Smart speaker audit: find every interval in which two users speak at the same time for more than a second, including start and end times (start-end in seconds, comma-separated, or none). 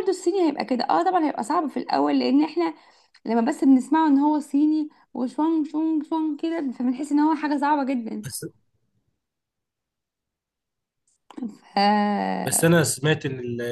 none